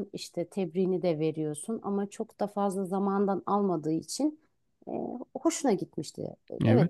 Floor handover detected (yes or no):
yes